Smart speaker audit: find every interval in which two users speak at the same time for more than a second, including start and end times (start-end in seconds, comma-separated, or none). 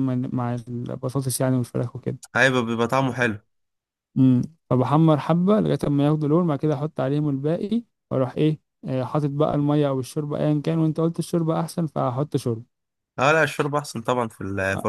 none